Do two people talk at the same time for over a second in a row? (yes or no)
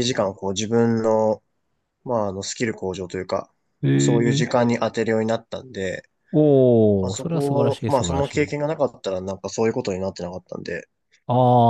yes